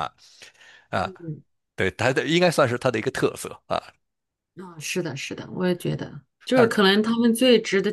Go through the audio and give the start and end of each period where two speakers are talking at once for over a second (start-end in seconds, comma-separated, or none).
none